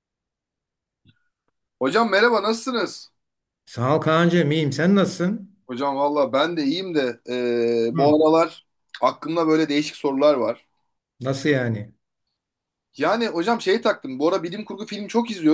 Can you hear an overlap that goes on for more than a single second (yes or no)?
no